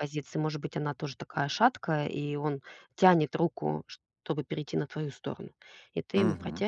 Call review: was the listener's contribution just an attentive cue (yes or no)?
yes